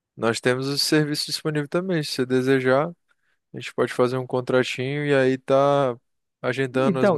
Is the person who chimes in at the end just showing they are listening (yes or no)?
yes